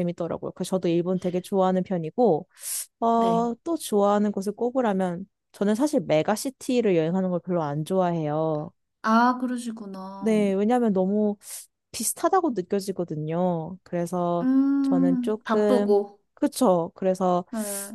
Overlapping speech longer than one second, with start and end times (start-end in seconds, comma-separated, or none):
14.4-16.0